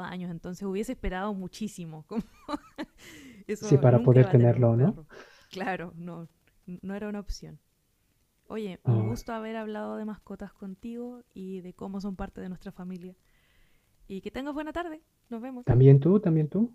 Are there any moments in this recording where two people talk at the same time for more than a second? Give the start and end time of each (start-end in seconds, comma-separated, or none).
3.6-5.0